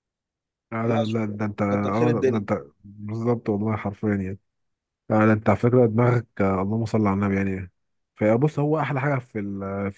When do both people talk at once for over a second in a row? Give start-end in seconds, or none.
0.8-2.5